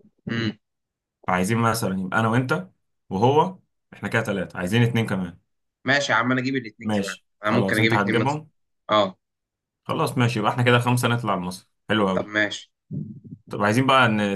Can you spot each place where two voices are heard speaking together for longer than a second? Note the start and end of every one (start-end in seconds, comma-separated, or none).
6.8-8.4